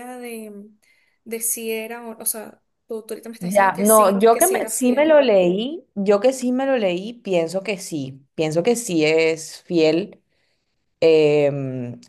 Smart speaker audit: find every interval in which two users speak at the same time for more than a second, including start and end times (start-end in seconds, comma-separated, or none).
3.4-5.2